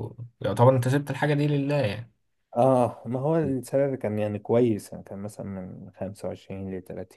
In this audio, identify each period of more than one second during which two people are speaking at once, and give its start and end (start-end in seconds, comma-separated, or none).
none